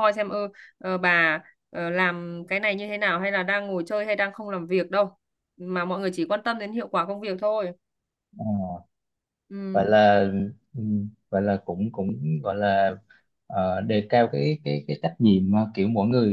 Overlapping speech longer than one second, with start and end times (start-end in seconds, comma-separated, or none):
none